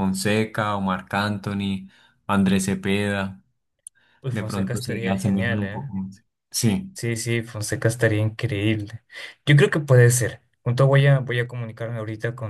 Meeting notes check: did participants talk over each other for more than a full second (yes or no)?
yes